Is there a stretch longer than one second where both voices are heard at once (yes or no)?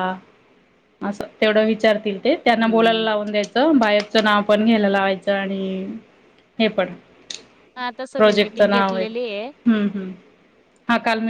yes